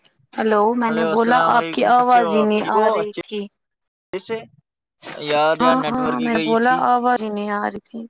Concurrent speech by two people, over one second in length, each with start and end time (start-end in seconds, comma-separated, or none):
0.9-2.9